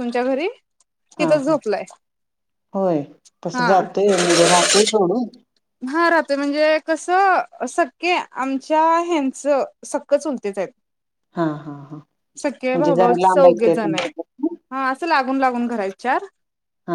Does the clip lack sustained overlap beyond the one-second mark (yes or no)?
no